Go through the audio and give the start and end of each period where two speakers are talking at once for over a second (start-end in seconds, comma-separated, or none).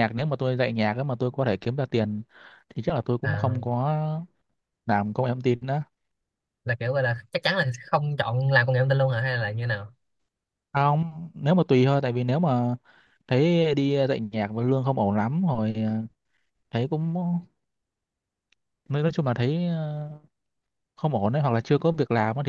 none